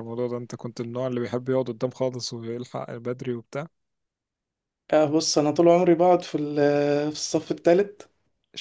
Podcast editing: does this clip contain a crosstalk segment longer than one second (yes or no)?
no